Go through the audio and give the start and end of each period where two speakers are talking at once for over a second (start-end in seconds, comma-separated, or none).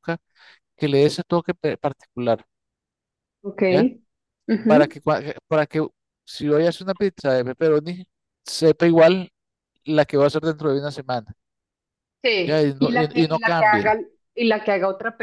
12.4-13.9